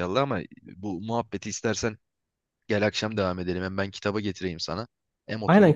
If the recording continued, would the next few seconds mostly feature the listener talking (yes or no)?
yes